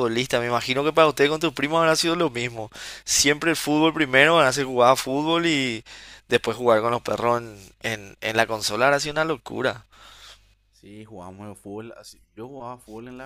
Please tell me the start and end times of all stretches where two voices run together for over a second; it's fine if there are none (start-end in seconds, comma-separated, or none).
none